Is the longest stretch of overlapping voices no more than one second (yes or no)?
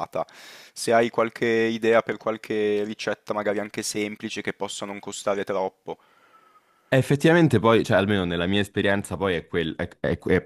yes